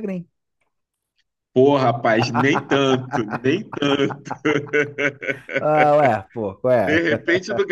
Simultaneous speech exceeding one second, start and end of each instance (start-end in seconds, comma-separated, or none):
none